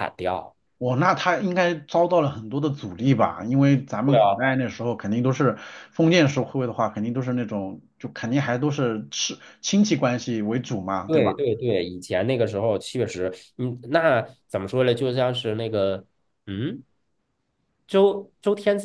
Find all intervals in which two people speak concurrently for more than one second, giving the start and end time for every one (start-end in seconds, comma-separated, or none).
none